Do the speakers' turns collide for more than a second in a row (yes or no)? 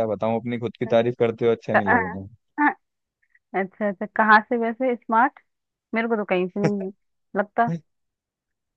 no